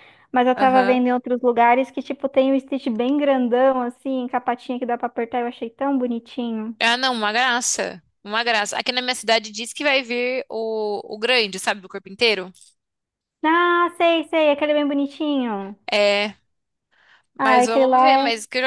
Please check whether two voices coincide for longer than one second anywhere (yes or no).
no